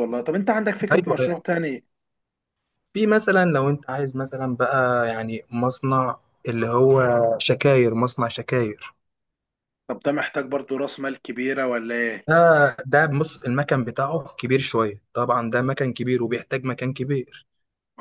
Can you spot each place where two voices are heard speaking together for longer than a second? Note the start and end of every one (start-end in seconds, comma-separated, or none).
none